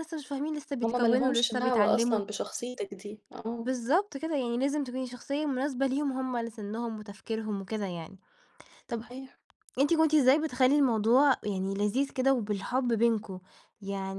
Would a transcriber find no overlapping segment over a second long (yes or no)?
no